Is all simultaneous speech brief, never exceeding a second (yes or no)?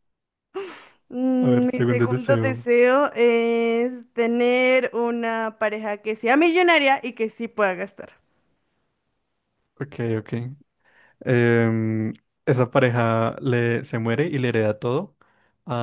no